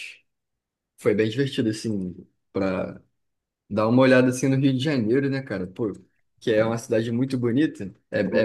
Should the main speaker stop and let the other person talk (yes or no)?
yes